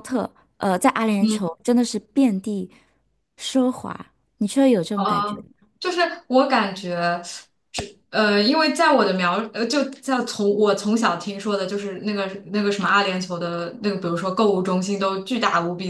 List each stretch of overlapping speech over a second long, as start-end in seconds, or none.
none